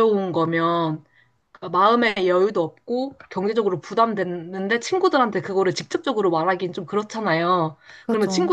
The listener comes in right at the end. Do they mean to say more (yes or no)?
no